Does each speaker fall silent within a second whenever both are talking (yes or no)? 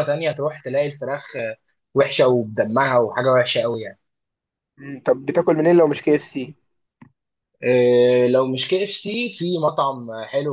yes